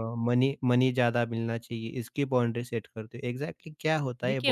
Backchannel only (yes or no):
no